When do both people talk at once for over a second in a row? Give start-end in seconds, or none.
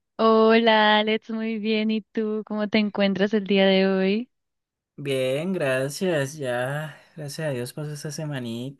none